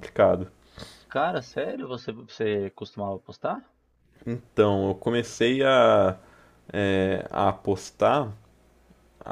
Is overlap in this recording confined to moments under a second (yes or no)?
yes